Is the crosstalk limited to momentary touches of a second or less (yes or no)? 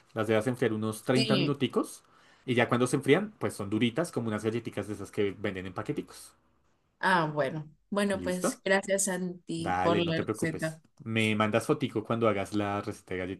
no